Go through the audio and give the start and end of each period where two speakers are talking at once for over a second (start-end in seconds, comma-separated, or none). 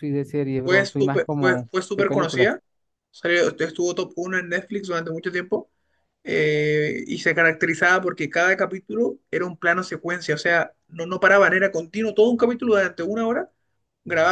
0.6-2.5